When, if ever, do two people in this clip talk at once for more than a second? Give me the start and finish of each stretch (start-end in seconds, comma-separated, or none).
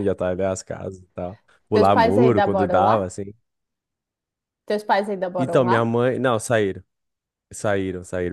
1.8-3.1